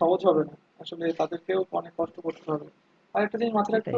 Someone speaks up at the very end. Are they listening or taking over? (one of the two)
listening